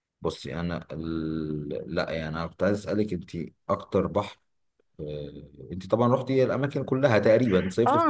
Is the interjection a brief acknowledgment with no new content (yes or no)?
no